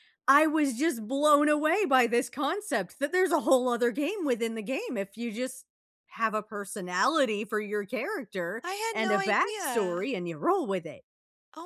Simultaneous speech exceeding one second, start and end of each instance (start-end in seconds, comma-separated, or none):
8.6-10.1